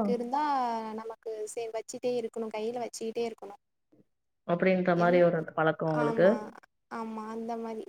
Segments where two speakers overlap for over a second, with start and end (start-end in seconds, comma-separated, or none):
none